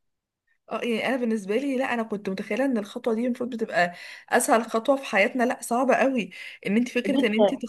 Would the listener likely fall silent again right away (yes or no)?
yes